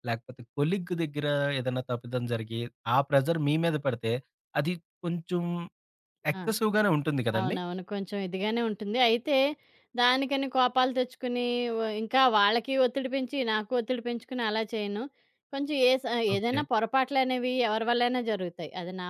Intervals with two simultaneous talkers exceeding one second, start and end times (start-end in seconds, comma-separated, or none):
none